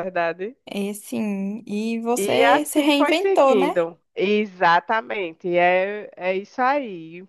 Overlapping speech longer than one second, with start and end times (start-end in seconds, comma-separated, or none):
2.1-3.8